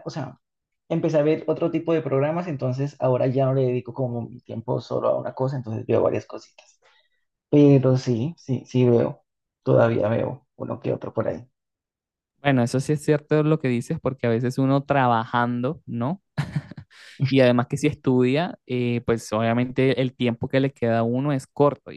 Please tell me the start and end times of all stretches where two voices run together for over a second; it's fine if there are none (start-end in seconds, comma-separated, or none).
none